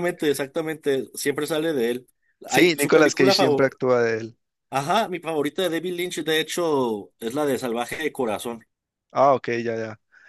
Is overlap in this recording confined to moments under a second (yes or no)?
no